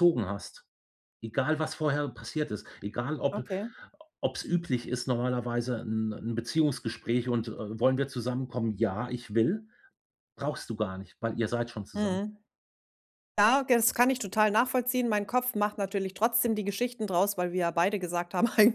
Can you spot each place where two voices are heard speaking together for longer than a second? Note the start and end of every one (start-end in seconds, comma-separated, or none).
none